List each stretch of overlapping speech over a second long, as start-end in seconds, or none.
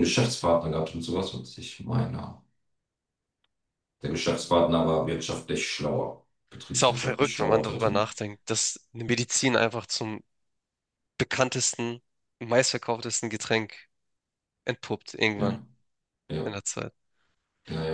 6.7-8.0